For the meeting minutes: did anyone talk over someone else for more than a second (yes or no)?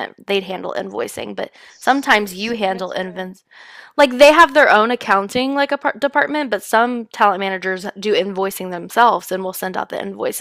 yes